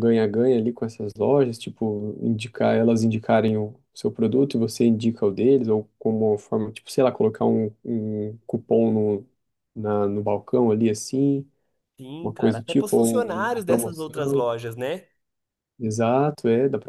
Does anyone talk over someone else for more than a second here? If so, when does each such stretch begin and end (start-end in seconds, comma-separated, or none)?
12.2-14.5